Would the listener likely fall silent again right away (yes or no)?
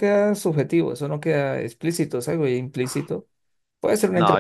no